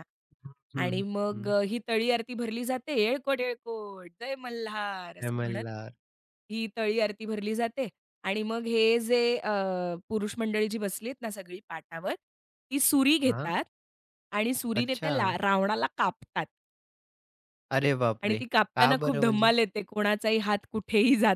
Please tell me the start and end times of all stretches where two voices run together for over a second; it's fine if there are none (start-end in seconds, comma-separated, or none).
18.2-19.5